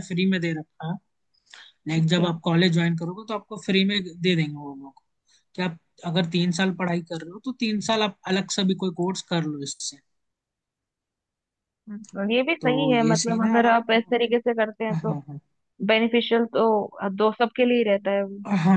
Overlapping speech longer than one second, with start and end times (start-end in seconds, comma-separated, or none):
12.6-13.8